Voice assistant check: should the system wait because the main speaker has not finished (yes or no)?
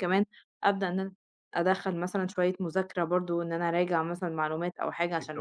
yes